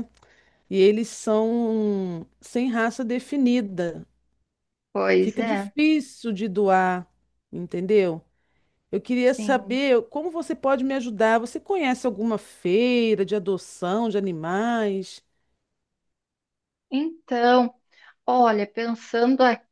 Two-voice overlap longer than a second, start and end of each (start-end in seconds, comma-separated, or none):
none